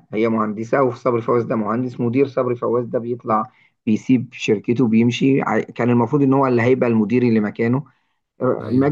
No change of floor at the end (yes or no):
yes